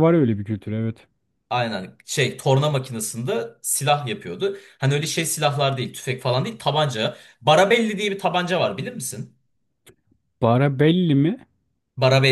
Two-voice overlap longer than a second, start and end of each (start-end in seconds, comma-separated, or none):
none